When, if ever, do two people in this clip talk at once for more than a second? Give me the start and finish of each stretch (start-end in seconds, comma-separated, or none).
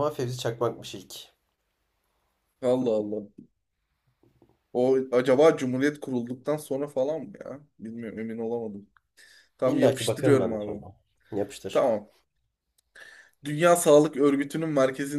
9.6-10.8